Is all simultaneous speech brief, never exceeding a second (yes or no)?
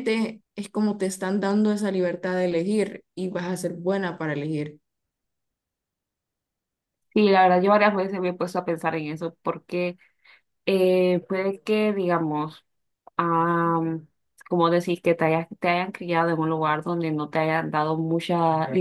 yes